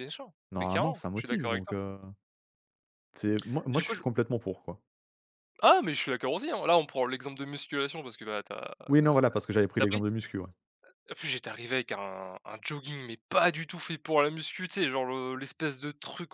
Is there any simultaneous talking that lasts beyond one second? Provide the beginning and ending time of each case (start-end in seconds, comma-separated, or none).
0.5-1.8